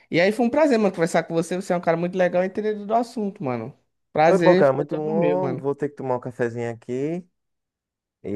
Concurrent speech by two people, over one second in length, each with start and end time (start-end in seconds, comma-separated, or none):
4.2-5.7